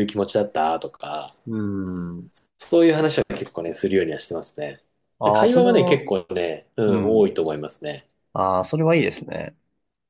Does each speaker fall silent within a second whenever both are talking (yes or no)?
yes